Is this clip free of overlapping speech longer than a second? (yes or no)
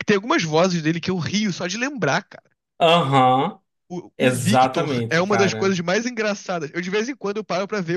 no